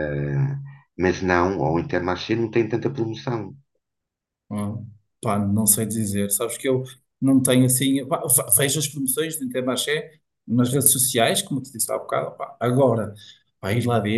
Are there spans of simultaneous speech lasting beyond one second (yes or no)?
no